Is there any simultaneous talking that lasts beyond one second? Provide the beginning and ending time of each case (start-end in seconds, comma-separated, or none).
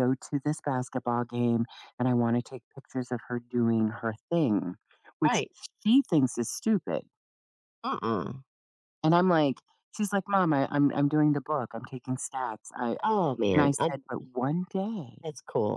none